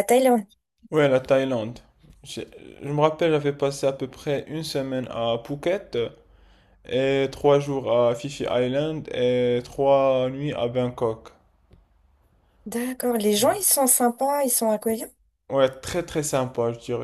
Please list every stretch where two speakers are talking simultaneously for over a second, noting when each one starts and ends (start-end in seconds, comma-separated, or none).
none